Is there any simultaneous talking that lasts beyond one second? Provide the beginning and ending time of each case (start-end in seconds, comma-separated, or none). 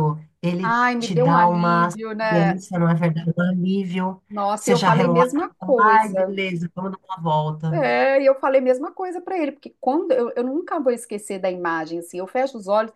0.6-2.6, 4.6-6.4